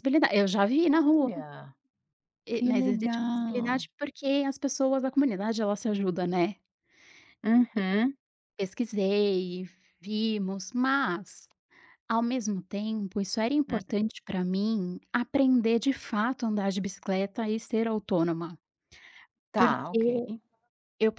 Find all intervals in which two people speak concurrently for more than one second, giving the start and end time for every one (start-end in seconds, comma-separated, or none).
2.5-3.9